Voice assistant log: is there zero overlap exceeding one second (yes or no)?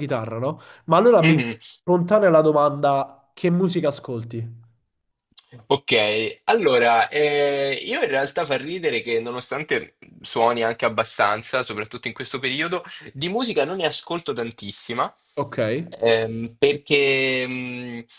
yes